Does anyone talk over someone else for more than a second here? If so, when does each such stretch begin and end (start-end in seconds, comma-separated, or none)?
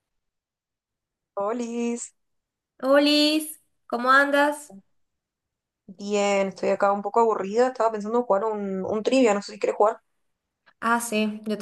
none